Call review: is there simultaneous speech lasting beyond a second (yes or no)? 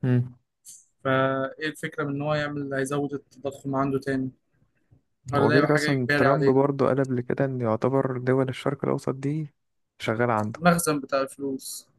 yes